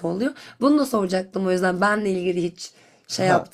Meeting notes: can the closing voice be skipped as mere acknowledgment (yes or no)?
no